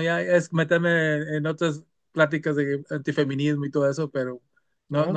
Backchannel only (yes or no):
yes